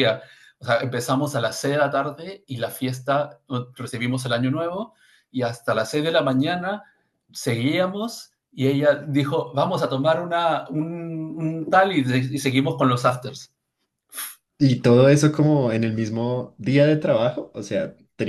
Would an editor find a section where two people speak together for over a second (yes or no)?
no